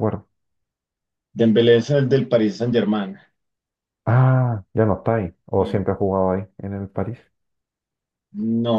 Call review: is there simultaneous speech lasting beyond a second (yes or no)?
no